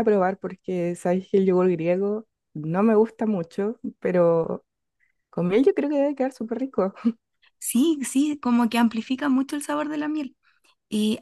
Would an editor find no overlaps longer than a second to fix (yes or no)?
yes